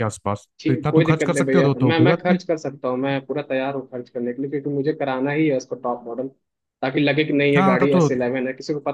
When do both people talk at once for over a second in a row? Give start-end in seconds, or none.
0.6-2.4